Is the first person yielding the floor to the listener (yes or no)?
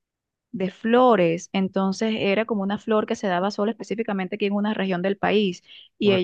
no